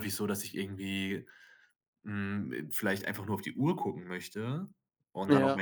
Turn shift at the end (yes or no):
no